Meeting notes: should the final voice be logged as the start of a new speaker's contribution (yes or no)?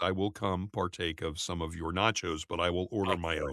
yes